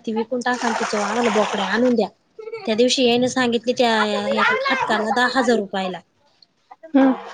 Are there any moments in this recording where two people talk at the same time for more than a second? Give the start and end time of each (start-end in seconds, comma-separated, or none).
3.9-5.9